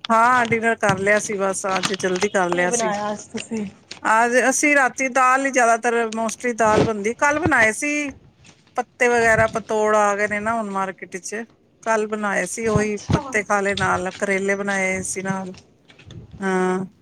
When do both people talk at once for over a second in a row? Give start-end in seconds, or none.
none